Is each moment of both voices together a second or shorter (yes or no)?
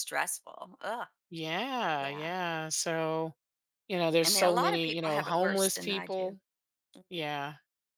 no